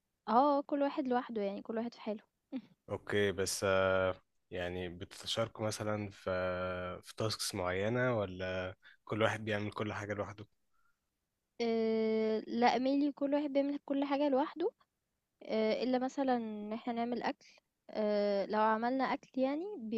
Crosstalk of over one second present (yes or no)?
no